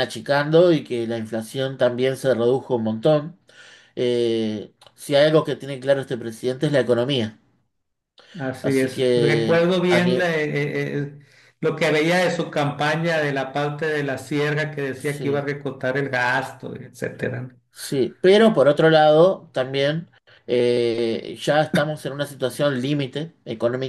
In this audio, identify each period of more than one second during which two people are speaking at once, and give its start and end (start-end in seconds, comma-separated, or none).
8.6-10.2